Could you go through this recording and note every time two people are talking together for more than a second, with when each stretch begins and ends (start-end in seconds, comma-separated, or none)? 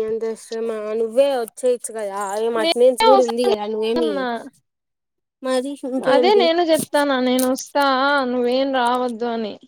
none